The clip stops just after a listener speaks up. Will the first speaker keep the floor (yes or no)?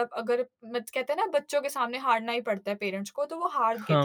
yes